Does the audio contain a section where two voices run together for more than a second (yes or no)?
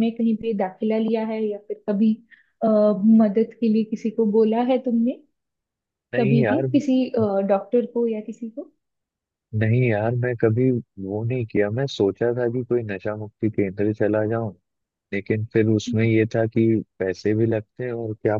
no